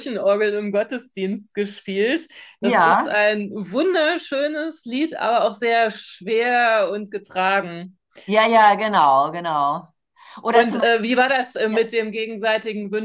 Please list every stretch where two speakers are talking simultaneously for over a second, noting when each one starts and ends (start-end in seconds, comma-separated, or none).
10.5-11.9